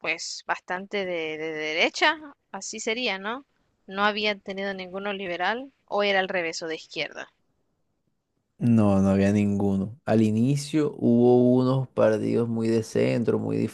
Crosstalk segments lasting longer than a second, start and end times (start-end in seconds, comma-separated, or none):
none